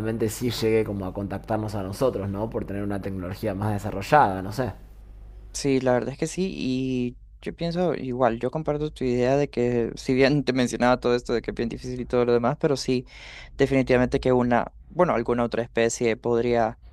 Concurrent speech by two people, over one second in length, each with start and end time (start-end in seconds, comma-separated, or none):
none